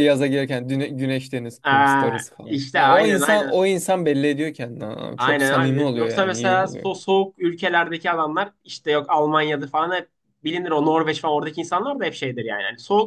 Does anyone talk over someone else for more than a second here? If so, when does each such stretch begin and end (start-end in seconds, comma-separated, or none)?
1.6-3.5, 5.2-6.9